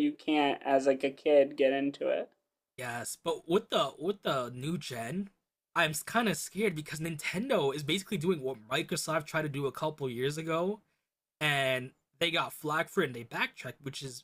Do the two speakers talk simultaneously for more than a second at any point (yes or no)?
no